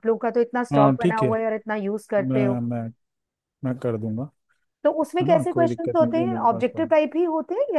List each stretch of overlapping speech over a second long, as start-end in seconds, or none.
5.2-6.9